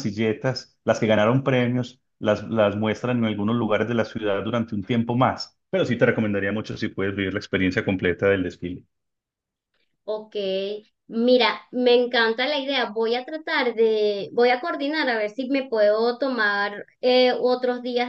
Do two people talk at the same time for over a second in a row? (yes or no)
no